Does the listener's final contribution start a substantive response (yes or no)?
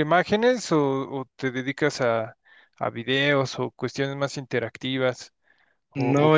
yes